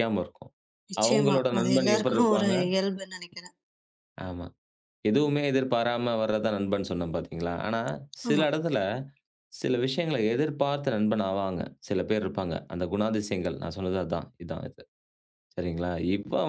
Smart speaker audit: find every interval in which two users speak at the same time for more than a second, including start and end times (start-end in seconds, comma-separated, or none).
1.0-2.5